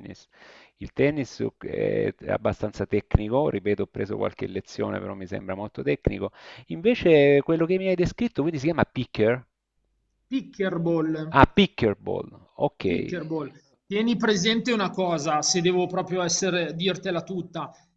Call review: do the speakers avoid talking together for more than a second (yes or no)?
yes